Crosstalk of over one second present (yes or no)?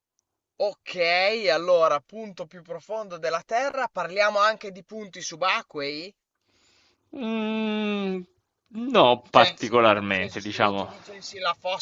yes